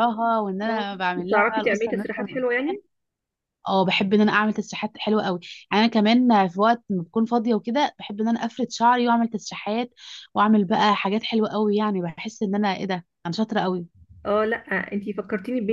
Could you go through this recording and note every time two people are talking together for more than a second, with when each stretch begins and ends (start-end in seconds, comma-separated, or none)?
0.7-2.8